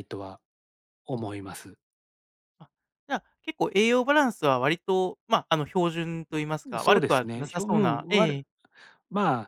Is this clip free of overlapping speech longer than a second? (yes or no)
no